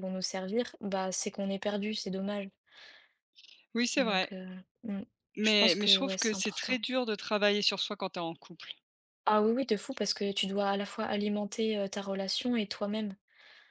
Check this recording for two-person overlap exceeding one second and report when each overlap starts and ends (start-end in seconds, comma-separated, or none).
5.4-6.8